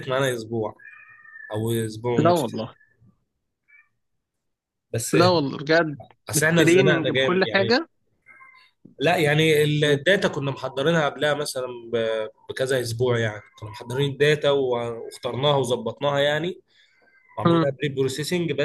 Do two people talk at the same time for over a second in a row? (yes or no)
yes